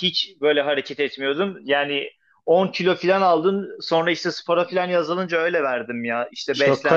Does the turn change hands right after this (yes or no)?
yes